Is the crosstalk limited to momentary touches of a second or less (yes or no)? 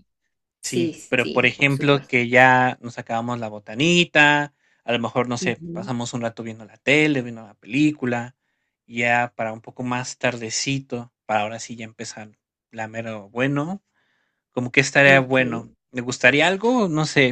no